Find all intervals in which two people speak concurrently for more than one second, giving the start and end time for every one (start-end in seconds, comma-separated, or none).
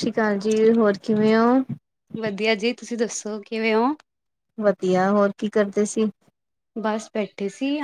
none